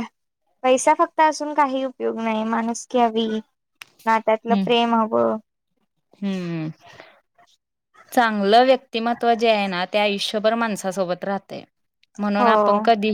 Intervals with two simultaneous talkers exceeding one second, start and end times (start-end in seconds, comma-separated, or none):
none